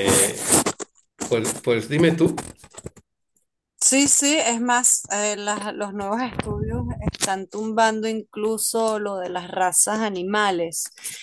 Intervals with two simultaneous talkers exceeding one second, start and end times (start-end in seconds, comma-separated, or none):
none